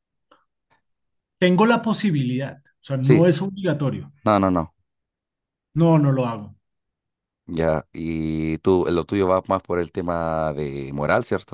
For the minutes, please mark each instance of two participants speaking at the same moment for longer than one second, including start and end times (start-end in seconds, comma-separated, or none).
none